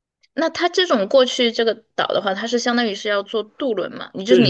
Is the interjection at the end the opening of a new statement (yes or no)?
yes